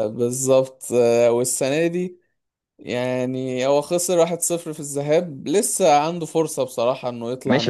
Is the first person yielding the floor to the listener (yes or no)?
yes